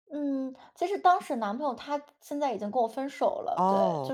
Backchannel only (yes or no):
no